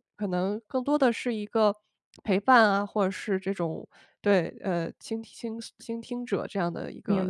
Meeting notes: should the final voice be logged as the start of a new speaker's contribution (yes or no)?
yes